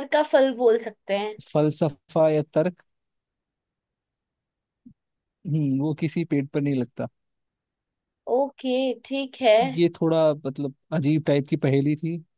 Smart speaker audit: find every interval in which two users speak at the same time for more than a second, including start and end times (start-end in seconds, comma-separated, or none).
none